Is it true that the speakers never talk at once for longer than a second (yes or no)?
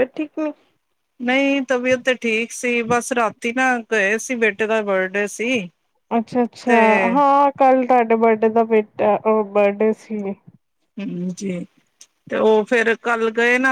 yes